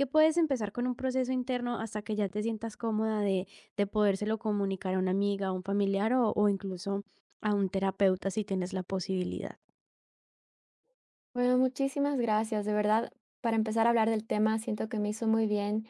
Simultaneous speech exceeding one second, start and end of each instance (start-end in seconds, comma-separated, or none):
none